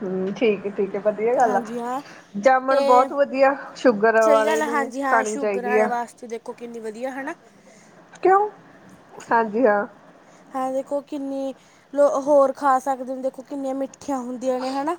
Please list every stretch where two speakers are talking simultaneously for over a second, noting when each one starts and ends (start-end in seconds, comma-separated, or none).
4.2-5.9